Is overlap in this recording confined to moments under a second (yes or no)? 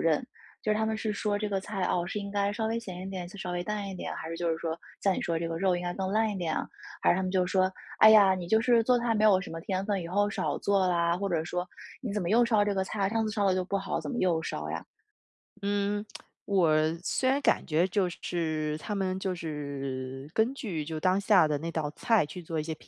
yes